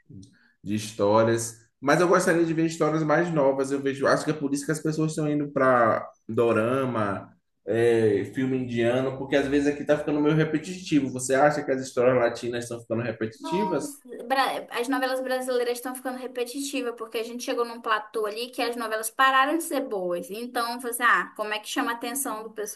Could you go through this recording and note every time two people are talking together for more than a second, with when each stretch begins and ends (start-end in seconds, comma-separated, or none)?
none